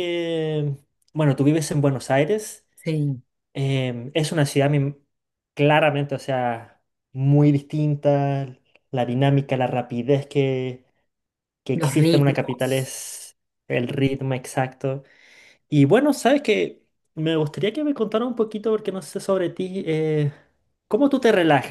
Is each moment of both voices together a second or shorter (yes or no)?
no